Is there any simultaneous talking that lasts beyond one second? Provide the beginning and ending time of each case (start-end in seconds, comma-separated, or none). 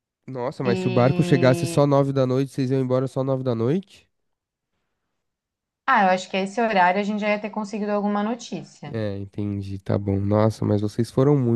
0.6-1.9